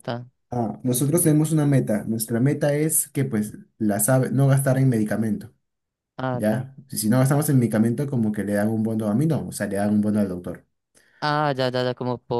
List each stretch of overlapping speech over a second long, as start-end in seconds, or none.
none